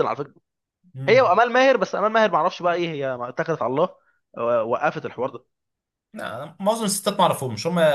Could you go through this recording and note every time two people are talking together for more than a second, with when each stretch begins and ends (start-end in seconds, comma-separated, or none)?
none